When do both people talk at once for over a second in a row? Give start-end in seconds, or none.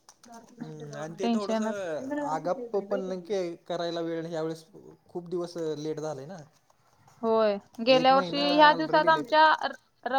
8.0-9.3